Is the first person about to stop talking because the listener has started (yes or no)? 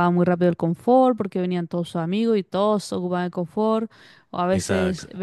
no